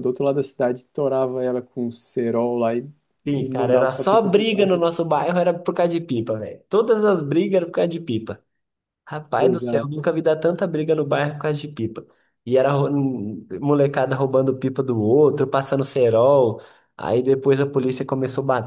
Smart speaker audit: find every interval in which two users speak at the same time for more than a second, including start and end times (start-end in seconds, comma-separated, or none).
3.3-4.7